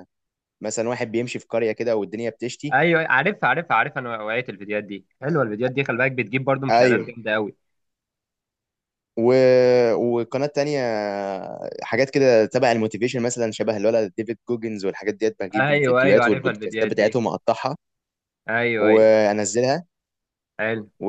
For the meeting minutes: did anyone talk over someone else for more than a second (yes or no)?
yes